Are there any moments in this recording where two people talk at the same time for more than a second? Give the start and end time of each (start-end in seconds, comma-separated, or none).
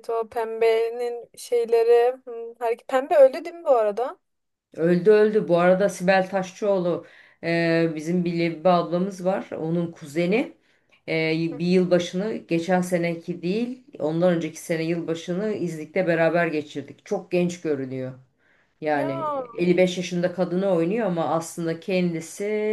none